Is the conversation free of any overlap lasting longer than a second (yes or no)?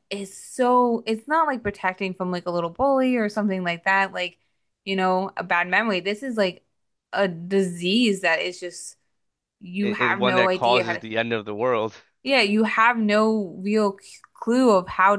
no